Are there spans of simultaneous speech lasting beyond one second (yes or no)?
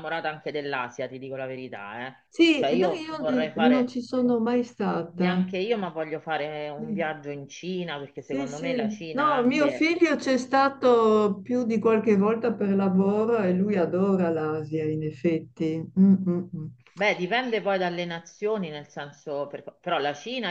yes